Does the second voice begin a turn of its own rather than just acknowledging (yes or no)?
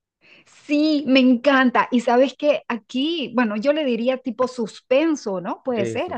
no